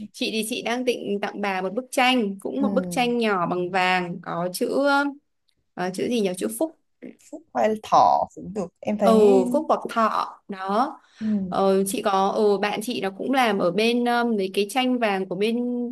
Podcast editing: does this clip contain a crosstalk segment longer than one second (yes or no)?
no